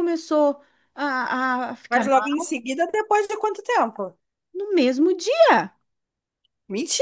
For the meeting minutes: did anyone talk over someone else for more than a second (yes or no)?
no